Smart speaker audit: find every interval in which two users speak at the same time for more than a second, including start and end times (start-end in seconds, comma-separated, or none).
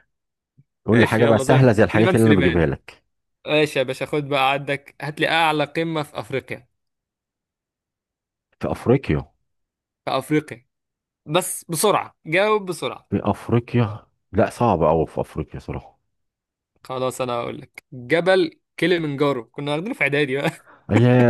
0.9-2.6